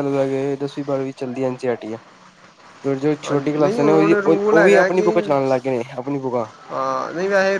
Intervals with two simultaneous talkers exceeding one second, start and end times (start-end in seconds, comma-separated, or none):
3.2-5.1